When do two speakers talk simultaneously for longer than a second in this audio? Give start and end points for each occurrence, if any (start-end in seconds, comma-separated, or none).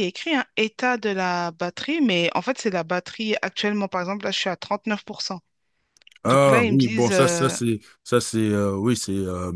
6.2-7.5